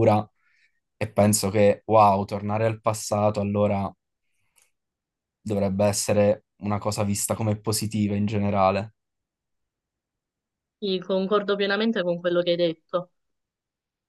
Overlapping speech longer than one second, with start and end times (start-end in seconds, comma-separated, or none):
none